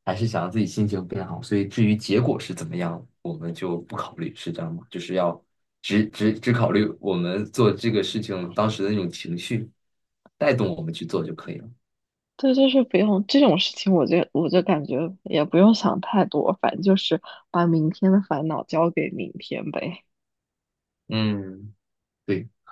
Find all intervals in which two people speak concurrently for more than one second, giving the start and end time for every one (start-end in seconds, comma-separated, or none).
none